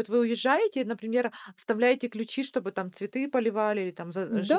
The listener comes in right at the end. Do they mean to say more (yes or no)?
yes